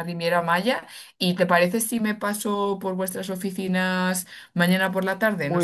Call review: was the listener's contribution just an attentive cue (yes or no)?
no